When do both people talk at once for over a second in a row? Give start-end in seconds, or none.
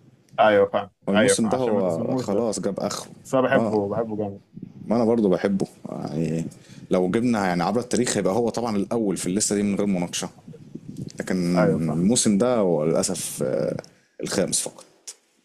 1.1-2.4